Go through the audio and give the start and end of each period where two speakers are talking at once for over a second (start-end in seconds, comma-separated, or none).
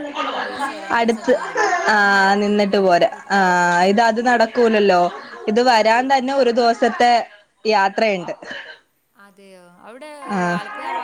1.9-3.8